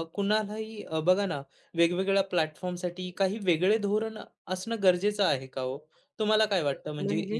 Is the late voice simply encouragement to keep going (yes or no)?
yes